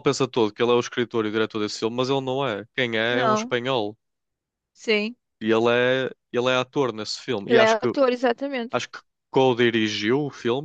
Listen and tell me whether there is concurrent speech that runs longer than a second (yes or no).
no